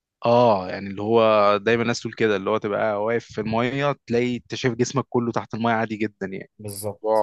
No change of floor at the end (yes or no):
yes